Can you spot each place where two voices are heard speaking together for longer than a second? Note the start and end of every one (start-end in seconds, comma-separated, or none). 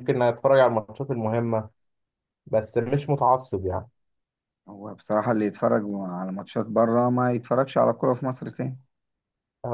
none